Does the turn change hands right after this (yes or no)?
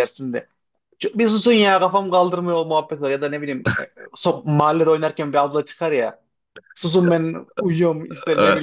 no